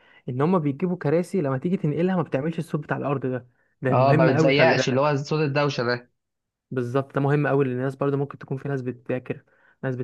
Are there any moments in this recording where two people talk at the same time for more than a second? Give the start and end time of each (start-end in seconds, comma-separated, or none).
3.9-5.2